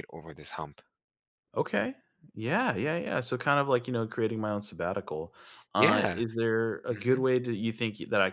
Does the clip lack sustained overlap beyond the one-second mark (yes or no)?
yes